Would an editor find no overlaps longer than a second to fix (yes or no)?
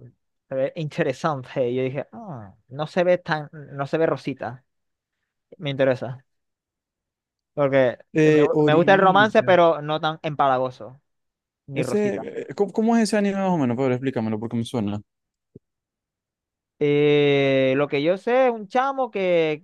no